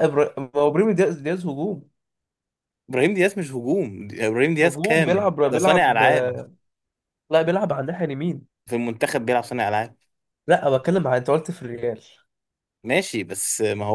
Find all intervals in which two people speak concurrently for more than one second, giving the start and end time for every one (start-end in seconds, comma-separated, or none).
4.6-6.0